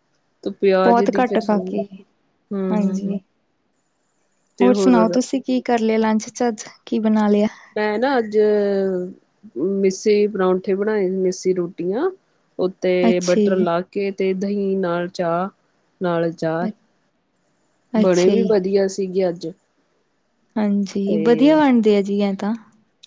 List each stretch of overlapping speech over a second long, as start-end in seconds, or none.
none